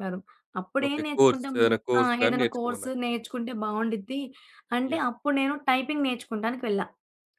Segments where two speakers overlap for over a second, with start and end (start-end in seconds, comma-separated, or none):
0.8-3.0